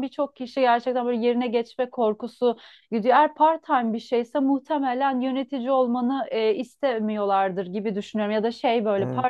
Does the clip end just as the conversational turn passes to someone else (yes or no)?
no